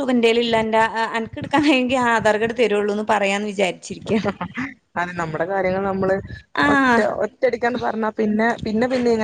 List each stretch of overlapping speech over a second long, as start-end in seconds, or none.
none